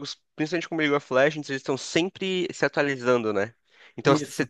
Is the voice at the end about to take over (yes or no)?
no